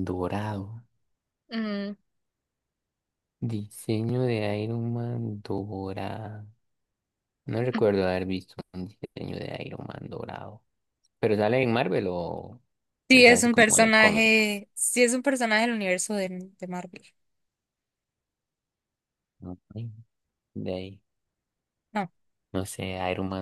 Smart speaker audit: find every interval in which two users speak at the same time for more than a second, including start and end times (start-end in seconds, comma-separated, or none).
13.1-14.6